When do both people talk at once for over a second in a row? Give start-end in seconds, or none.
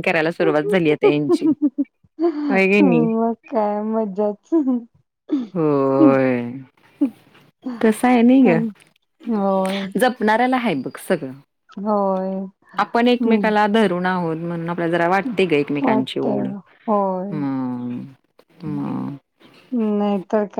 none